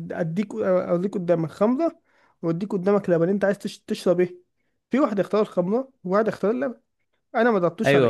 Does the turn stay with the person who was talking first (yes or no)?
no